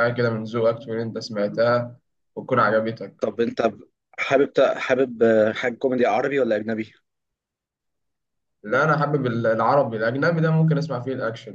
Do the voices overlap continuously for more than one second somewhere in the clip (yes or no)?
no